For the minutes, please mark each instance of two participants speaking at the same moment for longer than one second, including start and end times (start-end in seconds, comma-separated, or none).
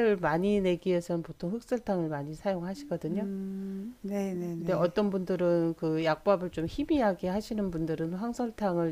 none